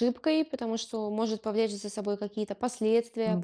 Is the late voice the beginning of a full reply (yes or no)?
no